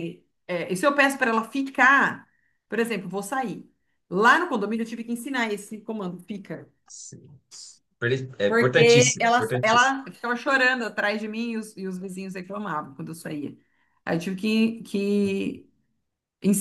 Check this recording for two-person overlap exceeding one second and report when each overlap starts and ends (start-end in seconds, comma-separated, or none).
8.5-10.0